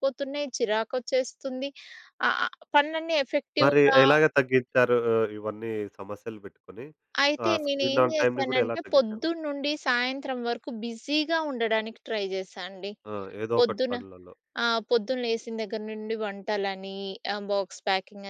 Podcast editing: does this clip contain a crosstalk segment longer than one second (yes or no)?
yes